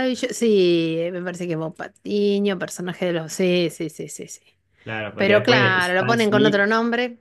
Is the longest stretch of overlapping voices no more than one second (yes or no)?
no